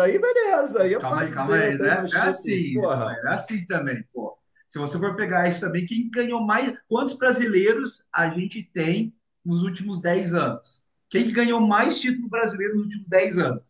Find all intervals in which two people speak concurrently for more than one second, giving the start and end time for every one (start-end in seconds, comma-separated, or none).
0.8-3.2